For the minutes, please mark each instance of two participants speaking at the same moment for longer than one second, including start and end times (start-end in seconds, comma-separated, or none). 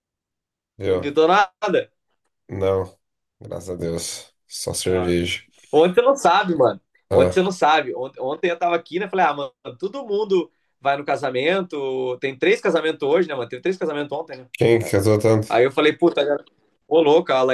none